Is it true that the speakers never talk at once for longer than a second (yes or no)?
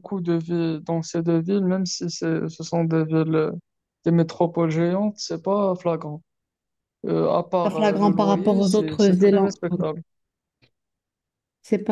no